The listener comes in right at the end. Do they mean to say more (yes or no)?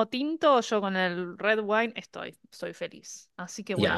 yes